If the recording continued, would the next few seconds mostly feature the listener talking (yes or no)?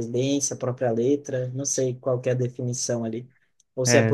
no